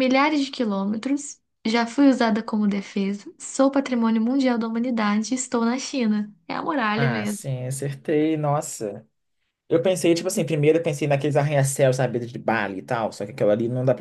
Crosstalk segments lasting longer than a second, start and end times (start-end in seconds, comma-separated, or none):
none